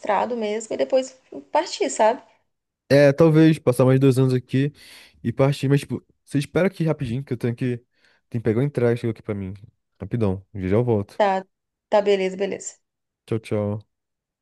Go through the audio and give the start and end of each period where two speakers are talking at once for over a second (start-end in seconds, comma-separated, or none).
none